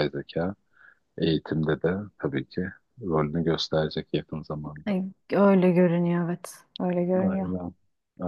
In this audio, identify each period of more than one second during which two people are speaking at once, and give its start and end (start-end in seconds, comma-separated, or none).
none